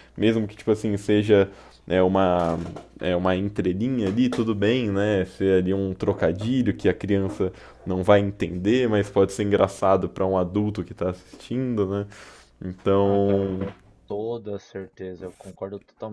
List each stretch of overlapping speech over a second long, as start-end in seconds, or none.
none